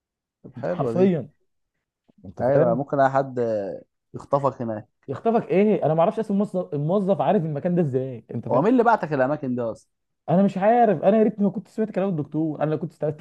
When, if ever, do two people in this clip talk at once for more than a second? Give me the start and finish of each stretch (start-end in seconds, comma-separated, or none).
none